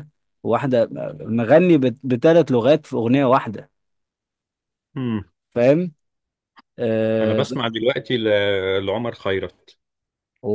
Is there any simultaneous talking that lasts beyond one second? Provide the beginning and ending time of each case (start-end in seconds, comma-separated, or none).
none